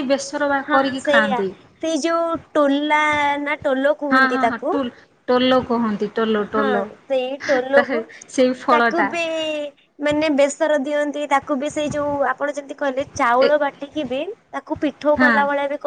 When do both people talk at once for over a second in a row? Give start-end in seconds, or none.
none